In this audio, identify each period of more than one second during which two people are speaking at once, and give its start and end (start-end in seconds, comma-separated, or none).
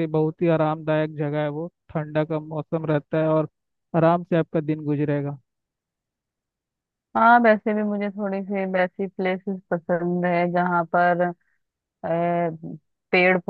none